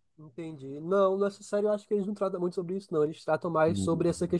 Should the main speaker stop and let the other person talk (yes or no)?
no